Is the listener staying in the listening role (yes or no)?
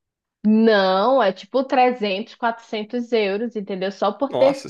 yes